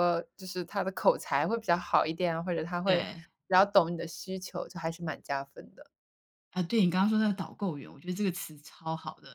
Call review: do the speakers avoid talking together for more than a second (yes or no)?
yes